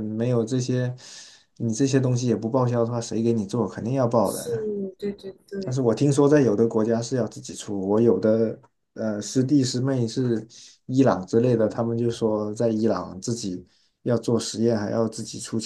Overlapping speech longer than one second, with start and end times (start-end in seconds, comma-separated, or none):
none